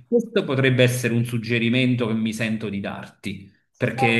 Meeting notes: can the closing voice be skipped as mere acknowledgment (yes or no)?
yes